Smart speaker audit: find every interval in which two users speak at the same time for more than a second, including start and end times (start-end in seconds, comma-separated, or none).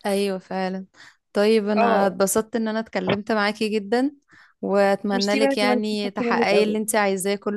5.1-6.8